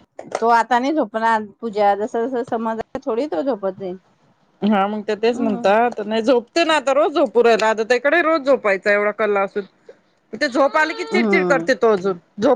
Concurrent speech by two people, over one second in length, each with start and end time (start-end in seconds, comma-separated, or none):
none